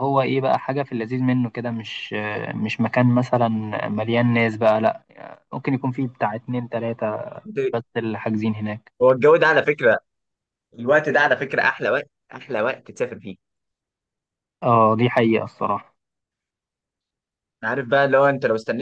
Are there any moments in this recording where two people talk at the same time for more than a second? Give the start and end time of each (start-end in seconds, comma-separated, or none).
none